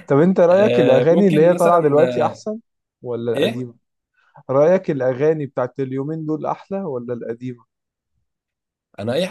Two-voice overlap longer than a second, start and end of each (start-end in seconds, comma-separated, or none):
0.5-2.4